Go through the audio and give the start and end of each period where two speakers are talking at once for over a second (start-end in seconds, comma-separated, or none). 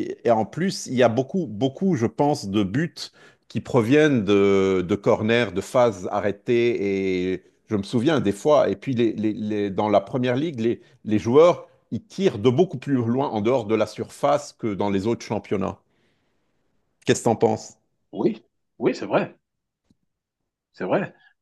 none